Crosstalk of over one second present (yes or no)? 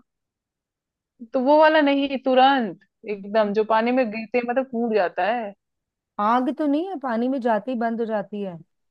no